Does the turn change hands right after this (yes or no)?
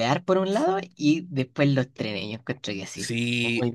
yes